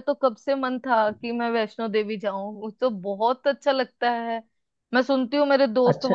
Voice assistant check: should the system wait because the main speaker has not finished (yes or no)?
yes